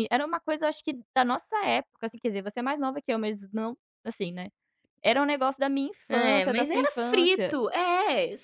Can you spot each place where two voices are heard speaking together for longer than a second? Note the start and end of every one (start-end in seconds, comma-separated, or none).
6.1-7.6